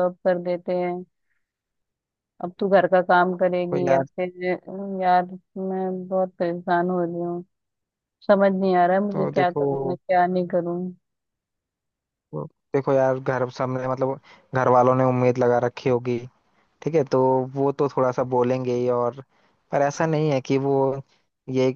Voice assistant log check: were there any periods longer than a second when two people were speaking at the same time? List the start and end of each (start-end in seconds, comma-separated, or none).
none